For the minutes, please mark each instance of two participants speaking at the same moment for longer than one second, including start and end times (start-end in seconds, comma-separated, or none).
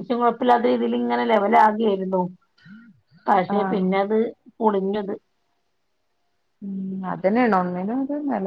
none